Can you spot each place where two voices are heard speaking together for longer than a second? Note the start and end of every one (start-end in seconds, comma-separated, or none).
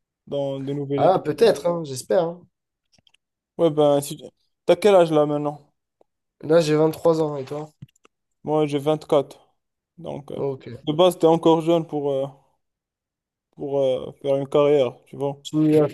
none